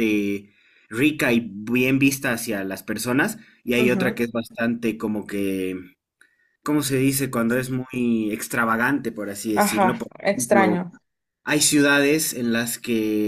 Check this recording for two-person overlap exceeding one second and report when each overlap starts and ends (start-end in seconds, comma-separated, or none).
9.5-10.8